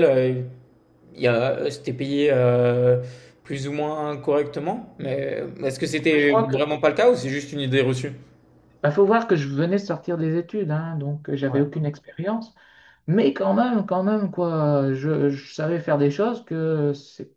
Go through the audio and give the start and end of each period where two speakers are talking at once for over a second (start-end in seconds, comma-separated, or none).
none